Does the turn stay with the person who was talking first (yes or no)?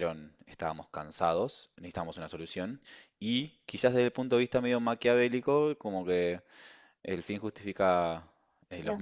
yes